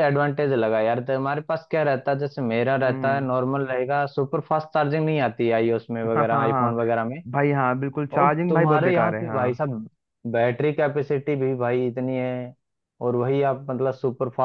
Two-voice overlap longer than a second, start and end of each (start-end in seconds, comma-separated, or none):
8.2-9.7